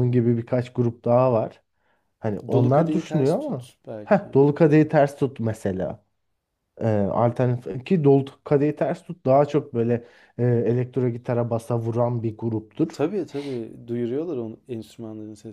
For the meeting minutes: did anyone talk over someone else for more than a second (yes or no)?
yes